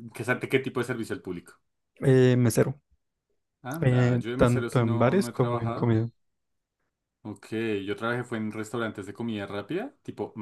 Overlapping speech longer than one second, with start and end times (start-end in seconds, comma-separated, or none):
3.8-5.9